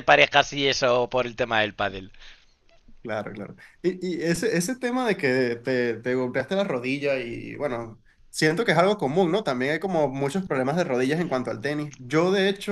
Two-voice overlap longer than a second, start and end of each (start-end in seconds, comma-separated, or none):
none